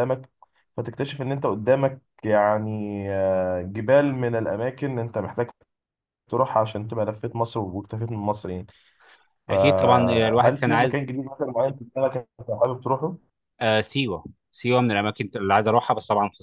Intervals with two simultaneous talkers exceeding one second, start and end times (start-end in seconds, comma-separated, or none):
9.5-11.0